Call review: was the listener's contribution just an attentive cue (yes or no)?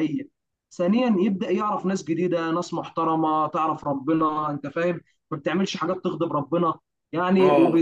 yes